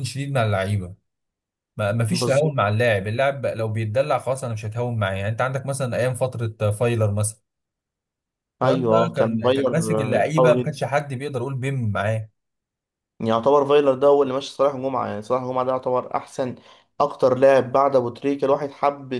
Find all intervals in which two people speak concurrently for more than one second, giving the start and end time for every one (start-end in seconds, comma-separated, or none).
8.6-10.8